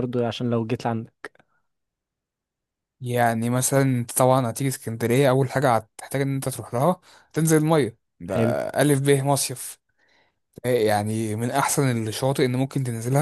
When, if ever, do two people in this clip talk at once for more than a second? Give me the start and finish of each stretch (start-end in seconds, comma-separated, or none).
none